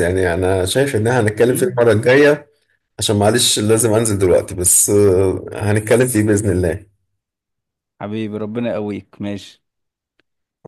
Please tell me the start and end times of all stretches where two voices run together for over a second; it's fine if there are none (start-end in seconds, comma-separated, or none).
none